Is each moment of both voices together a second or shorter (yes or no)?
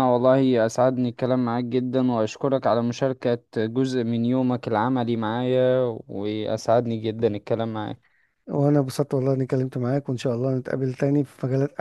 yes